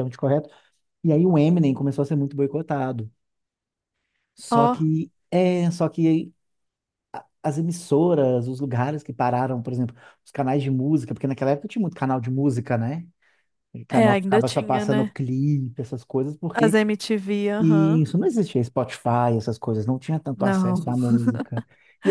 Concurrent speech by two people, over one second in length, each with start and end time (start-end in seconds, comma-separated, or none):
13.9-15.2